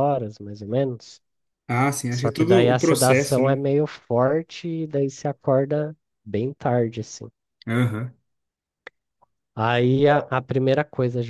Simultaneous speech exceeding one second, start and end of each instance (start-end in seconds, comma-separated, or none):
2.1-3.6